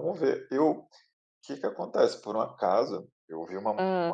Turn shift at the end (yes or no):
no